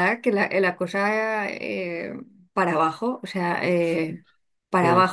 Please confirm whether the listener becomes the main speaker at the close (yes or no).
no